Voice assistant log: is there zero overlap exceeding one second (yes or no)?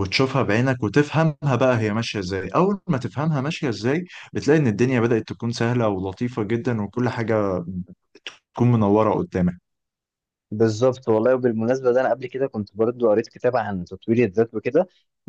yes